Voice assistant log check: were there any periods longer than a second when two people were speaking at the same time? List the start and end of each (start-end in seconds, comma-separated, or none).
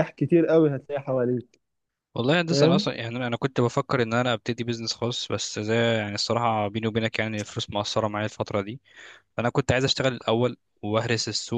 none